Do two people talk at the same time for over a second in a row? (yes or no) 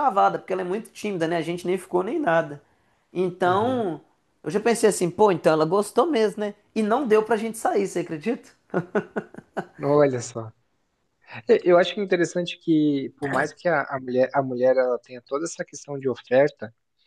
no